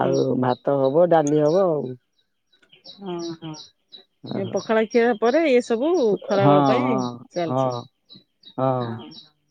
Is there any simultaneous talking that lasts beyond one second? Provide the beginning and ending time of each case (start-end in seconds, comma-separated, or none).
6.4-7.8